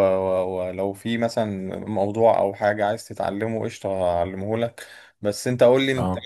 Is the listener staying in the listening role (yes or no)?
yes